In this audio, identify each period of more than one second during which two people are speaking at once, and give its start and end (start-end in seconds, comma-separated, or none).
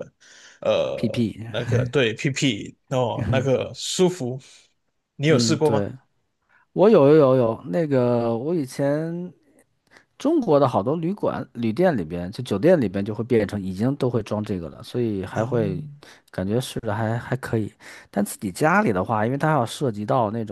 none